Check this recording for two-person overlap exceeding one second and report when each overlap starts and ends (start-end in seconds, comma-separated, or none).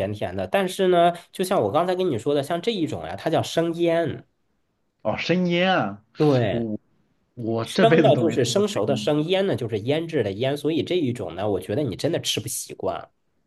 7.6-9.1